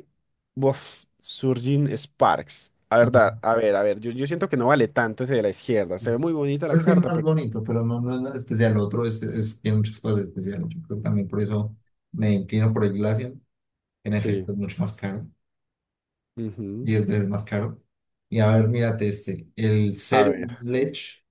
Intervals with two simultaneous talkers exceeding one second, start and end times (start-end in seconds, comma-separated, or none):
none